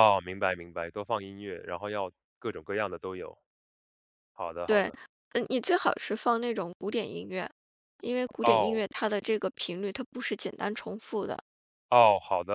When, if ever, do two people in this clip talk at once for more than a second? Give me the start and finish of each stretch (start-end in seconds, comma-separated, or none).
none